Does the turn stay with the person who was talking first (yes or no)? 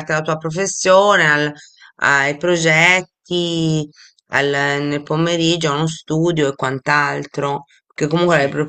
yes